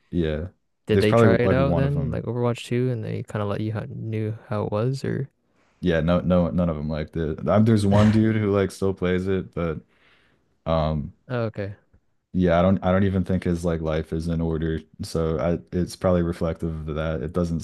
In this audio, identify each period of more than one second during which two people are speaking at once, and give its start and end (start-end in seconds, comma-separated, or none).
0.9-2.2